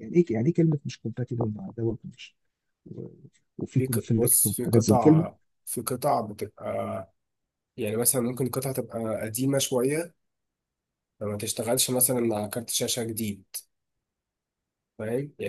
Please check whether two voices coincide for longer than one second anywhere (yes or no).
yes